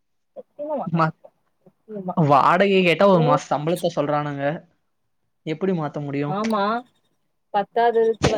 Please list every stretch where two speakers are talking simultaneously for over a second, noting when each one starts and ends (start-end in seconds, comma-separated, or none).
none